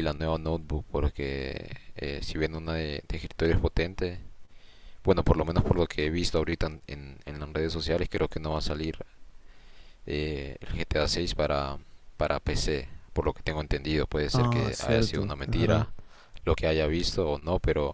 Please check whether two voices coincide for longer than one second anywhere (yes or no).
yes